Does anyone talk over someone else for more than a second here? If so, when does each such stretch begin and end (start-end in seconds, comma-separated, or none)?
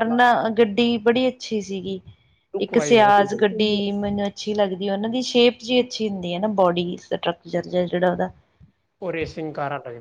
2.6-3.9